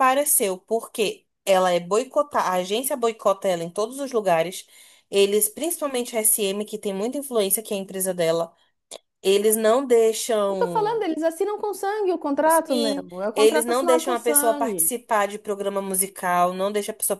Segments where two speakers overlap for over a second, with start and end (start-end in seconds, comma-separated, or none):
12.5-14.9